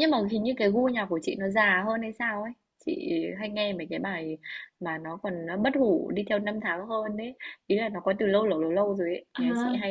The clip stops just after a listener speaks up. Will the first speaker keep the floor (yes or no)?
yes